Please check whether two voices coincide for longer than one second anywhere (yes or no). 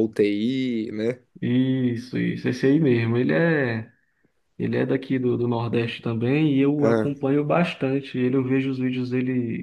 no